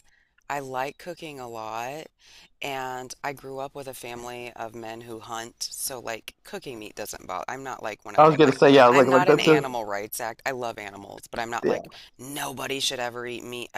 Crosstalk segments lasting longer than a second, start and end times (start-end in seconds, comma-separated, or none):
8.2-9.6